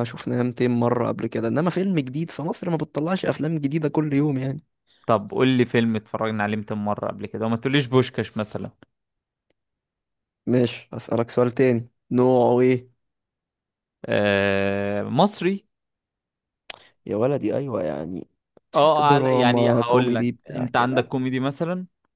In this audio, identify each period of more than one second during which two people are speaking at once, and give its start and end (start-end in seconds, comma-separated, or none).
19.0-21.1